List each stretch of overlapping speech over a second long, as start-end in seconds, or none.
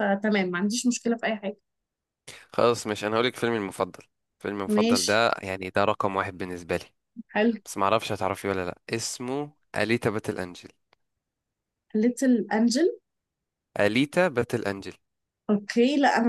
none